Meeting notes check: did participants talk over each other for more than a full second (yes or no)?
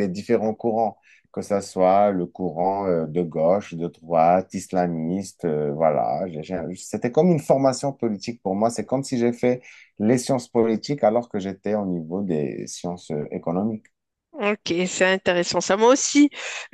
no